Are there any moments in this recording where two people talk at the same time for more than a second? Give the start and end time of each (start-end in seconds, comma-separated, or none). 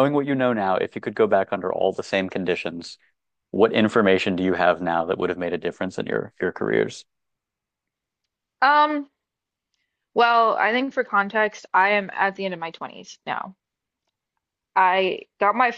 none